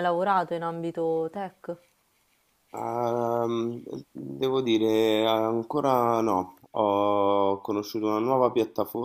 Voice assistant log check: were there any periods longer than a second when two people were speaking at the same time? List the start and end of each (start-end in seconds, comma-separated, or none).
none